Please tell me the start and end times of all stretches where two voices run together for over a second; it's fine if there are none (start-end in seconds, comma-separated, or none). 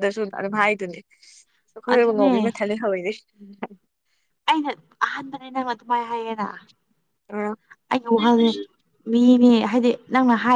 none